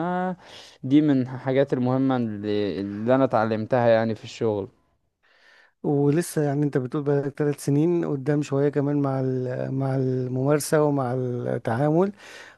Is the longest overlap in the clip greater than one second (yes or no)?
no